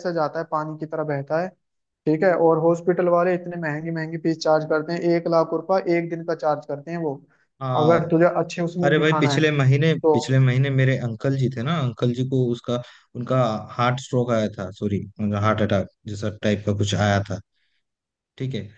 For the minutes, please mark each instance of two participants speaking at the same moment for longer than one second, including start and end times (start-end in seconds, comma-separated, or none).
none